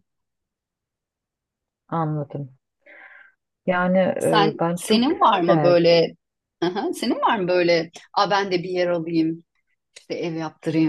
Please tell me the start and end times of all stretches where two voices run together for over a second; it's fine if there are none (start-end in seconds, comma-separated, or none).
4.3-5.8